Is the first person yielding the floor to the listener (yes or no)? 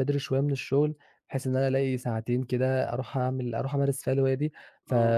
no